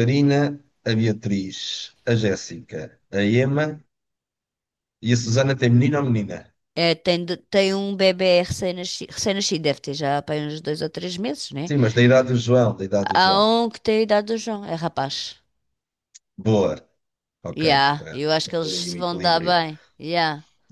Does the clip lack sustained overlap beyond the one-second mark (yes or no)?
no